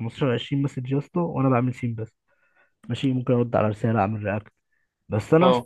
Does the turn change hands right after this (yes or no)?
no